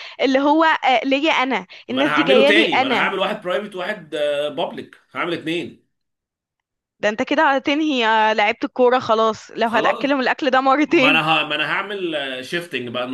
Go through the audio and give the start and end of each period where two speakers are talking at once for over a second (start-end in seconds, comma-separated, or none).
1.9-3.2